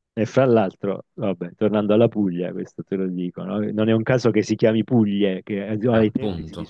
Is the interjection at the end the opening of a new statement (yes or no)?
no